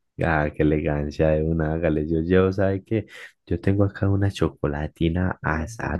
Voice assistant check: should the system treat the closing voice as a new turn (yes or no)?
no